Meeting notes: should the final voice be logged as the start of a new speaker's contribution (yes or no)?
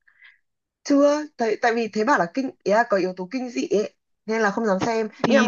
no